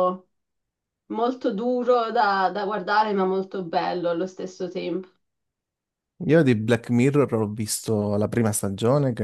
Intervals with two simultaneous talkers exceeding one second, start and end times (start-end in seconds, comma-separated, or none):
none